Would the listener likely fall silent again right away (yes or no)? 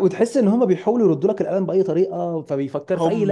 no